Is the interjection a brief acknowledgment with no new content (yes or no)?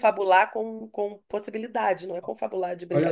no